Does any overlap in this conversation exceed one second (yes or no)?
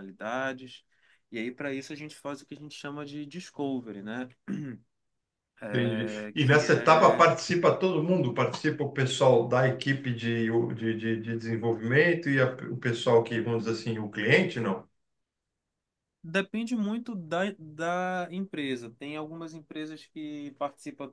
yes